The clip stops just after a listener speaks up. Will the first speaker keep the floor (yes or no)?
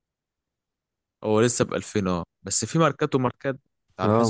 no